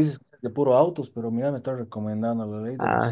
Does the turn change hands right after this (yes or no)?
yes